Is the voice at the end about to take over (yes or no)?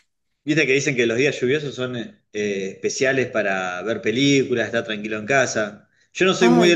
no